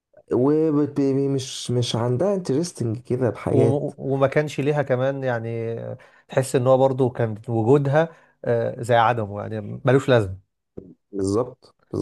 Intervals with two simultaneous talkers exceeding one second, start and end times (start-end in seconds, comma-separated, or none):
none